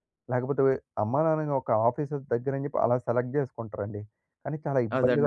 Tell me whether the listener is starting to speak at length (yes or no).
yes